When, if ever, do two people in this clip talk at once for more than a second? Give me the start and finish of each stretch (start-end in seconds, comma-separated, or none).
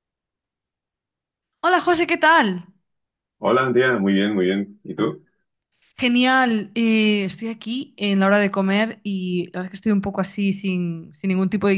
none